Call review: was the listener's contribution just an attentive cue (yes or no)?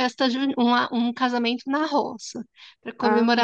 yes